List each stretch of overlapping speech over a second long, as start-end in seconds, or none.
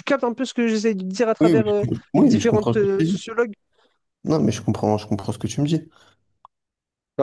1.4-3.2